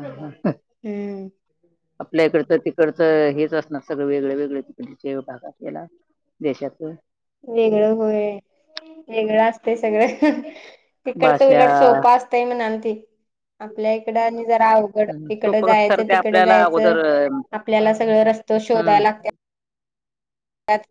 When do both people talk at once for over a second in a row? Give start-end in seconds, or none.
15.4-16.9